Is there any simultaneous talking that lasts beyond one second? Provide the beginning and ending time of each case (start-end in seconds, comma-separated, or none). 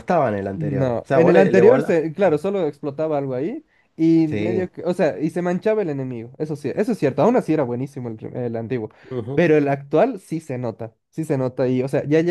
0.5-2.0